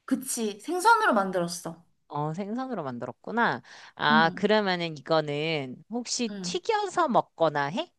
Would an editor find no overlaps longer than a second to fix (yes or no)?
yes